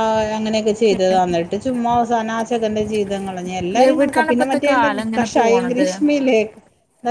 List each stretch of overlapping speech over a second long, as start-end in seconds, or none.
3.9-5.9